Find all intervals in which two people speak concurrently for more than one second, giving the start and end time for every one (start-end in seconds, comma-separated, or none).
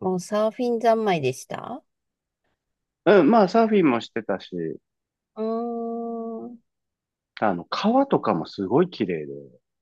none